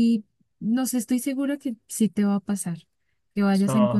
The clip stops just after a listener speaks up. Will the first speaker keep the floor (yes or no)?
no